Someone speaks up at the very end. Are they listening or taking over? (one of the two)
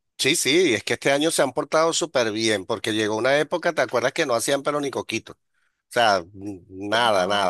listening